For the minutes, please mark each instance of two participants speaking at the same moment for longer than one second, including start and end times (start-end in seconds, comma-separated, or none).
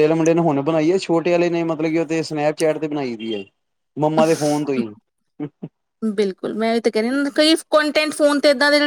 none